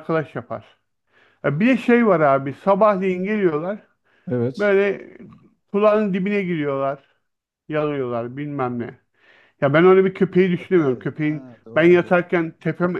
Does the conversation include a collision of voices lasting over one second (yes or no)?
yes